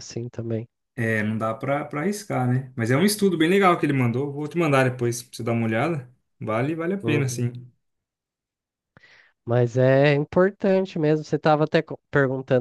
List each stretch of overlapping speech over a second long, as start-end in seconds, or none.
none